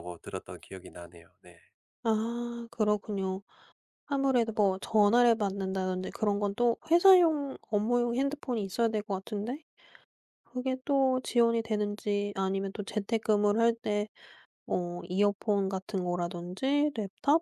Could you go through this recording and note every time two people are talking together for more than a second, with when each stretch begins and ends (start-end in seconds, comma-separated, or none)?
none